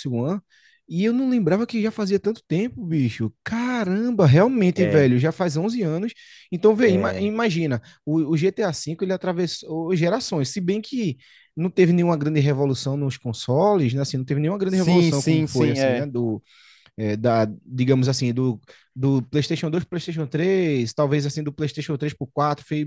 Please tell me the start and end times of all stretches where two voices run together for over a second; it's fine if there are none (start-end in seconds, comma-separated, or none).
14.7-16.1